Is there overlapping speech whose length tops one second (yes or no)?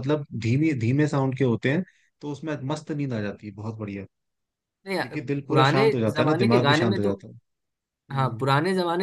yes